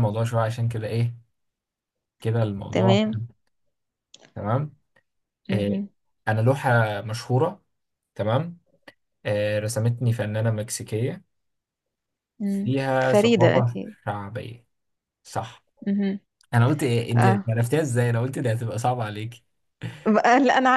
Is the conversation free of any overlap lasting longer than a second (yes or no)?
no